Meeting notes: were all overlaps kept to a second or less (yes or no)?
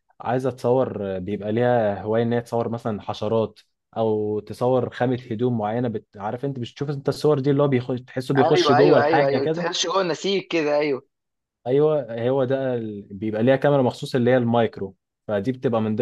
no